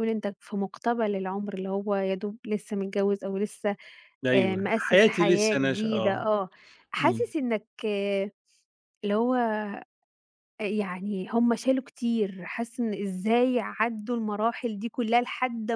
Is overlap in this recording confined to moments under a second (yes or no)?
no